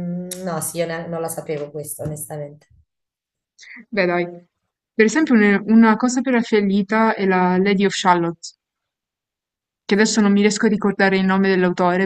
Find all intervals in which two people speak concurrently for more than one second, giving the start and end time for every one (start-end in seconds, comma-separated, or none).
none